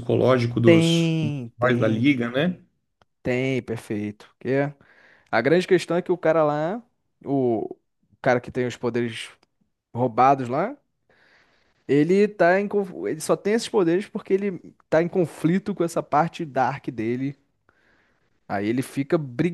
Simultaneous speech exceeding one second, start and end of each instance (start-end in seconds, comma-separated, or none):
0.6-2.1